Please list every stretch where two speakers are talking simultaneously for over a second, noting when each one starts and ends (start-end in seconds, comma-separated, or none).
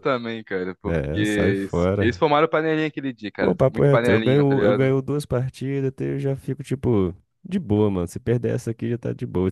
0.8-2.1, 3.4-4.9